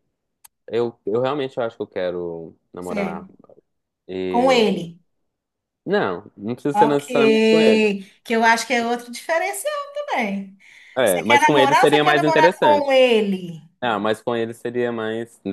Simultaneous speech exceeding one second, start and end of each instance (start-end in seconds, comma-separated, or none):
11.0-12.9